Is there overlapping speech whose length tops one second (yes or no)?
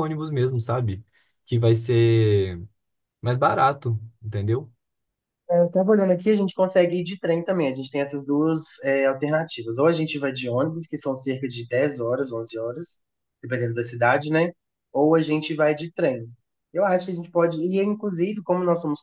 no